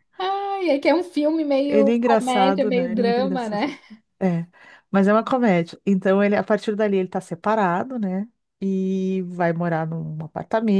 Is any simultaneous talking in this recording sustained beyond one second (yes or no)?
yes